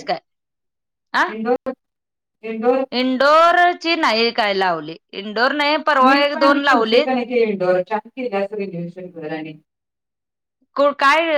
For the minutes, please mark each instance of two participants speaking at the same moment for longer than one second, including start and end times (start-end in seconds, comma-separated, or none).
none